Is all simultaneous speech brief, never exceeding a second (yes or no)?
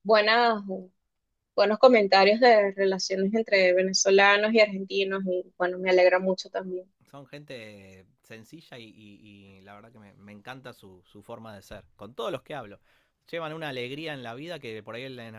yes